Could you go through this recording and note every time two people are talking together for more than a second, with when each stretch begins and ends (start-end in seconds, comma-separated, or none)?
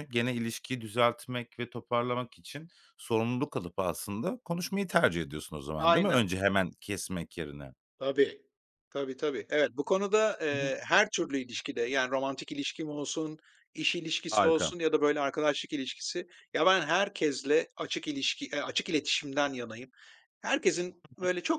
none